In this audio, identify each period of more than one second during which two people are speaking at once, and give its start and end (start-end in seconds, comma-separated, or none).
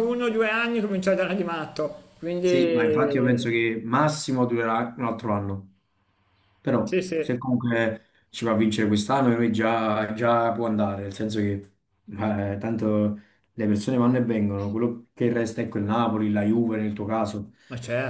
none